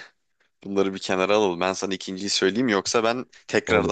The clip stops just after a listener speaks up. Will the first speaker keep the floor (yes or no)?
yes